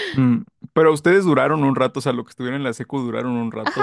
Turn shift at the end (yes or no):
yes